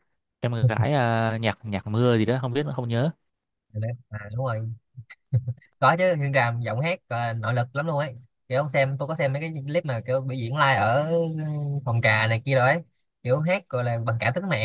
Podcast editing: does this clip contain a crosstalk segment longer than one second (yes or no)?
no